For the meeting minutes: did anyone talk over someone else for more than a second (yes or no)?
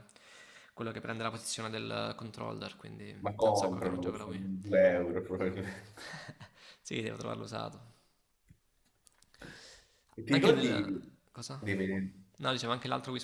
yes